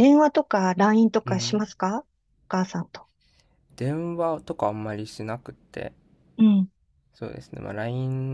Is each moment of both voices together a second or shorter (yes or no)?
yes